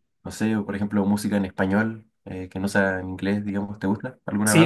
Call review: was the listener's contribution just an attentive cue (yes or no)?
no